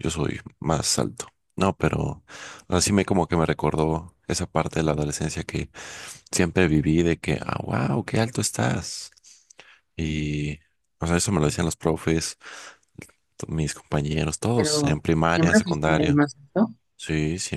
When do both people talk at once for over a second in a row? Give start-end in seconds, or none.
14.6-16.2